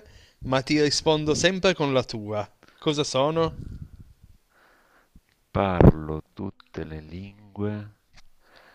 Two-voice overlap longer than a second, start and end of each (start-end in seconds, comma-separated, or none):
none